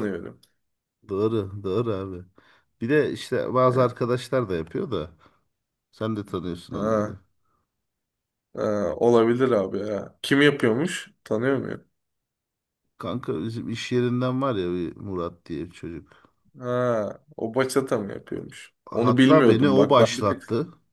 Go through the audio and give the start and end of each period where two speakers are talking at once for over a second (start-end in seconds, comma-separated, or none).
18.9-20.4